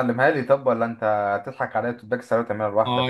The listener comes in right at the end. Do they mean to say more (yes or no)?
yes